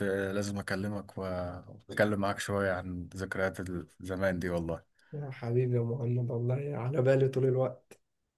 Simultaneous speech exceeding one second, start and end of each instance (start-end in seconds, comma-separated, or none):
none